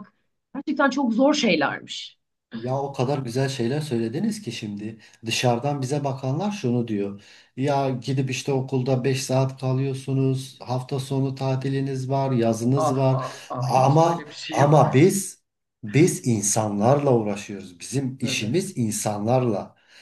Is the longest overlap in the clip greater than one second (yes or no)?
yes